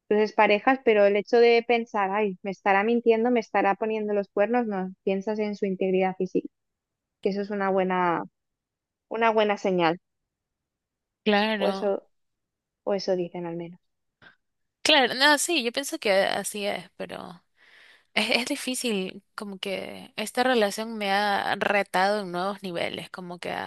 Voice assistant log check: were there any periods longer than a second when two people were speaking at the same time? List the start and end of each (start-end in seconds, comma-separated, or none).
none